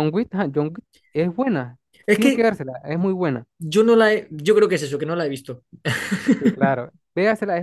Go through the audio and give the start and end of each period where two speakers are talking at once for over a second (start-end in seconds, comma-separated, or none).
none